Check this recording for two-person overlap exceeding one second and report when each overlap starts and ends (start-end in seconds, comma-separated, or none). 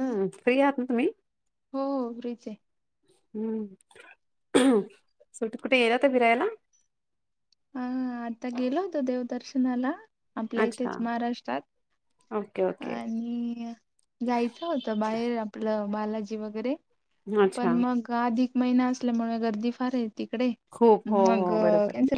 none